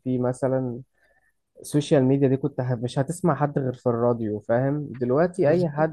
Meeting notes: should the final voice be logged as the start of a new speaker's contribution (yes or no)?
no